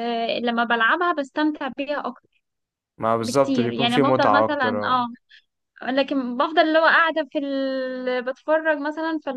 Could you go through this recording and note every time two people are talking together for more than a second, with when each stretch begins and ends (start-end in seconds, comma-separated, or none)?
3.2-5.0